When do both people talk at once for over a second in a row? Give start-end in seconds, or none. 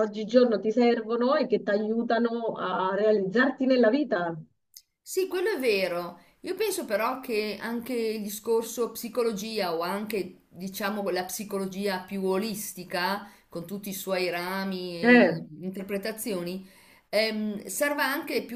none